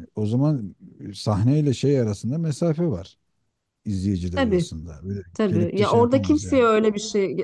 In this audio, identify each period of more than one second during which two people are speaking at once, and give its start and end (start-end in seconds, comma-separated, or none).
5.3-6.7